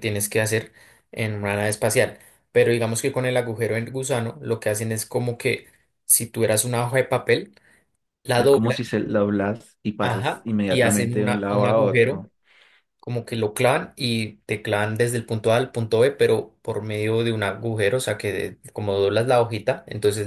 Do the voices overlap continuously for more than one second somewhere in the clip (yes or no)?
yes